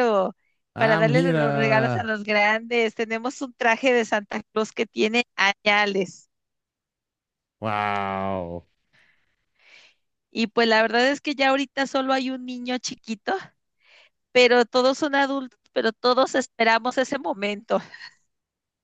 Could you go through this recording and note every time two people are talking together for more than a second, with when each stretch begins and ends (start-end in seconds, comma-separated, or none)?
0.8-2.1